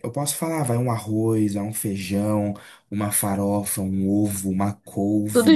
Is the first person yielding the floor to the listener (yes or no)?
no